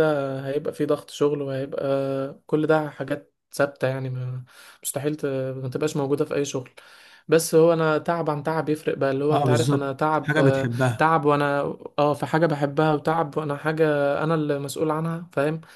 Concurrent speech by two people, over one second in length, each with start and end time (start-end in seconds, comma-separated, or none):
9.3-11.1